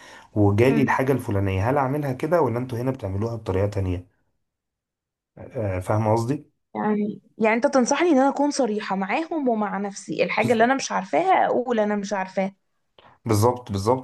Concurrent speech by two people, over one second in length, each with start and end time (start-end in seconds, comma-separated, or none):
none